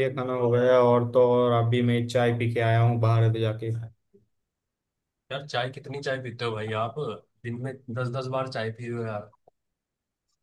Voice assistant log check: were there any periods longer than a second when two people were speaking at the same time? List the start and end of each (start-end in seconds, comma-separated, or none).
none